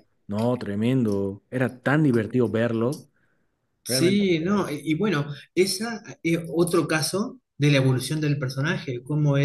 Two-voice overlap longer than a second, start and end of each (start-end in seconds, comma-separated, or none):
none